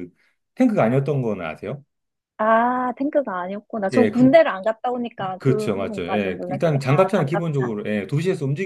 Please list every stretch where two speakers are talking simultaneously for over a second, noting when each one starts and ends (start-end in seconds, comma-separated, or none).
5.4-7.7